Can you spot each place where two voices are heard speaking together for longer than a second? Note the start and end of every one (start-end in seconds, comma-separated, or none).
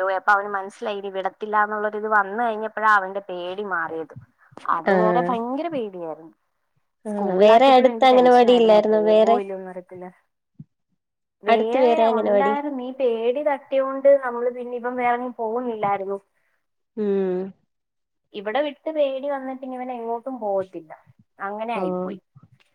7.1-9.3